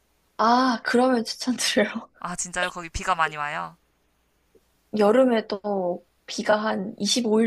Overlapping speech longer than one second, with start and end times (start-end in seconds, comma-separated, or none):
none